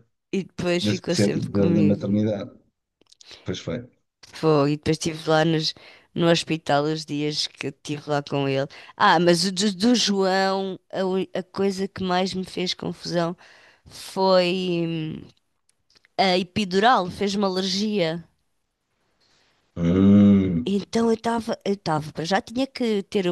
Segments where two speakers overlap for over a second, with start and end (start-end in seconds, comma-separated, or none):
0.8-2.0